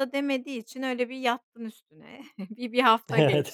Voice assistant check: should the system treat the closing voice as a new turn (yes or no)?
no